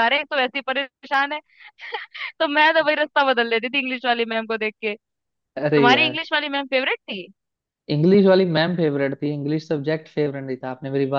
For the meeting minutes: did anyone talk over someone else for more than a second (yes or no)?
no